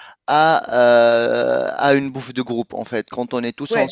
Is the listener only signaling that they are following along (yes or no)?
yes